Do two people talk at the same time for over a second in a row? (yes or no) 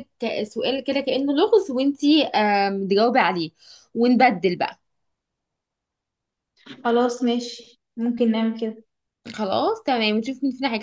no